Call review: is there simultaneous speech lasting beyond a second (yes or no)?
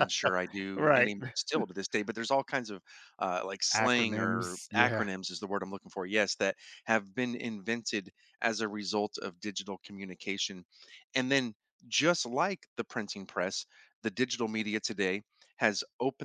yes